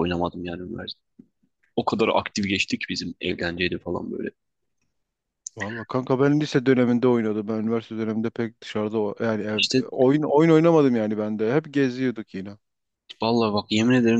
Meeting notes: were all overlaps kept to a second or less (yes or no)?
yes